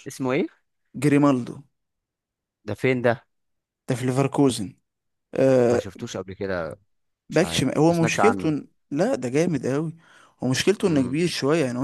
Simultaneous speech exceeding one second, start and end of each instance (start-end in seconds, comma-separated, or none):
7.3-8.5